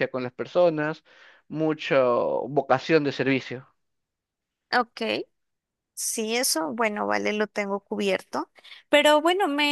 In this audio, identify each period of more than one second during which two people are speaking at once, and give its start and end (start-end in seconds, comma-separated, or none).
none